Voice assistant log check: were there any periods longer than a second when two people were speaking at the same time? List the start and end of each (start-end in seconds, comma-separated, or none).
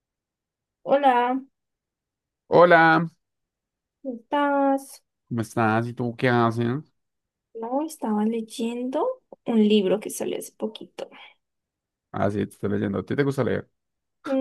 none